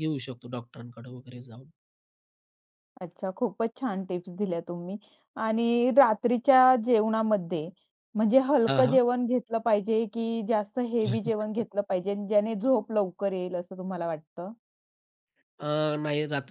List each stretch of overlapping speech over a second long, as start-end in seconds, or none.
none